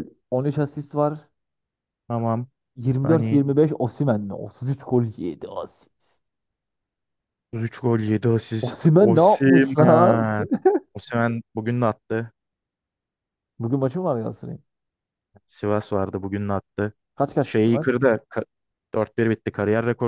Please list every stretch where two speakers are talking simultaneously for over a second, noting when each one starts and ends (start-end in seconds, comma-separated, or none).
8.6-10.3